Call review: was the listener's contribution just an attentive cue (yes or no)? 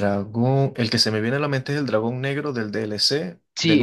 no